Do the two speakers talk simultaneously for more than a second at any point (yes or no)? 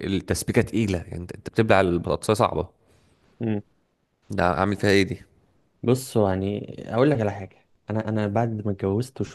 no